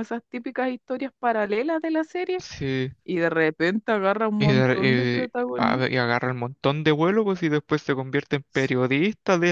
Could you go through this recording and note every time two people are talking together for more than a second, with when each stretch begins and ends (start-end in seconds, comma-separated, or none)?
4.4-5.9